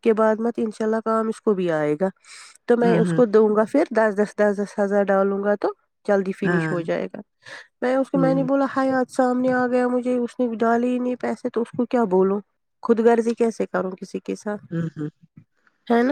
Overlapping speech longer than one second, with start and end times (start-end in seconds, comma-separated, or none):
none